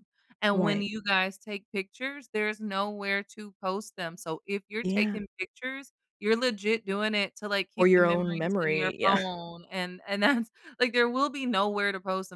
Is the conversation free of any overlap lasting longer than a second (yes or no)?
no